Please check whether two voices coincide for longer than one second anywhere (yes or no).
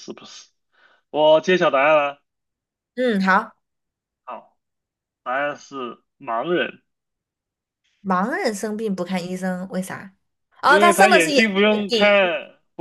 yes